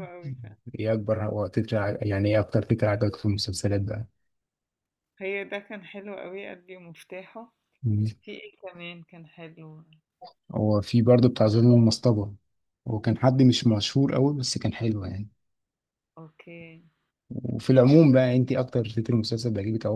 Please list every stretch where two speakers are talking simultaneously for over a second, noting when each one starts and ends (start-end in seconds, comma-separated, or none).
none